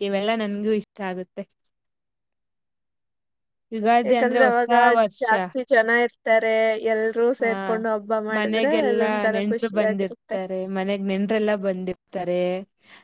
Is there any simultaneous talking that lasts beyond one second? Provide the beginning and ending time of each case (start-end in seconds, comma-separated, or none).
8.4-10.3